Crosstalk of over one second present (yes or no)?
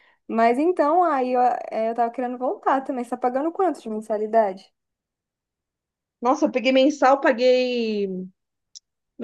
no